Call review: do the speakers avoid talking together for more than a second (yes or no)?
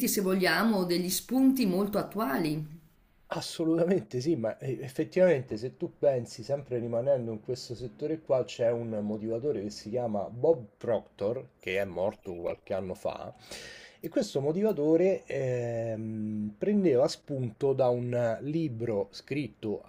yes